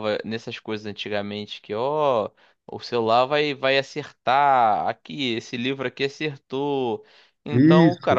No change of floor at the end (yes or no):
yes